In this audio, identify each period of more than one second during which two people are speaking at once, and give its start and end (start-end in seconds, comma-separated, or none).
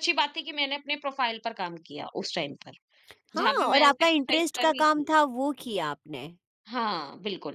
3.4-5.1